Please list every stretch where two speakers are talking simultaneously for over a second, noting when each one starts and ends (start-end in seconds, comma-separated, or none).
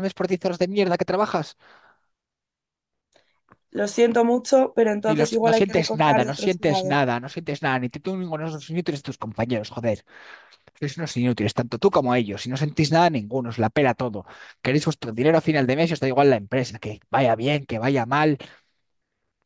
5.1-7.0